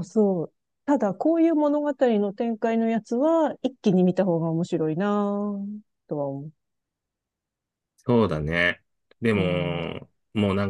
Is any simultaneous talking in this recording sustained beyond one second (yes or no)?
no